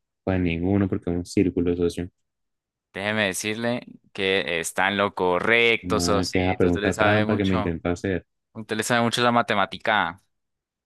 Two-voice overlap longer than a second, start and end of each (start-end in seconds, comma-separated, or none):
5.8-7.8